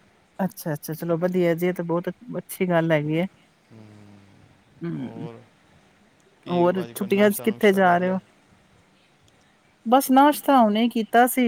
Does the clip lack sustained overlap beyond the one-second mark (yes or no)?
no